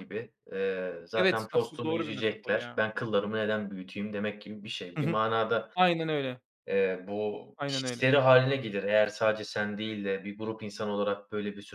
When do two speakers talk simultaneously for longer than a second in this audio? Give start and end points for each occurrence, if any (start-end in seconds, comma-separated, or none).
1.1-2.8